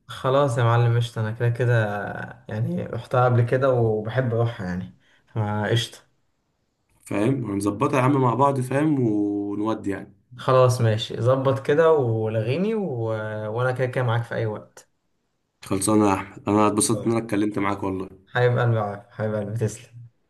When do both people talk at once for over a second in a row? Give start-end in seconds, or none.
none